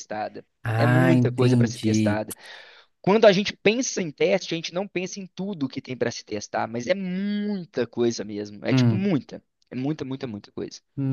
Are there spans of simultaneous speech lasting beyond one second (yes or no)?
yes